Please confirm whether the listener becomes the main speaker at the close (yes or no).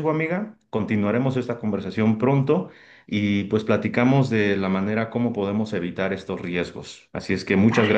no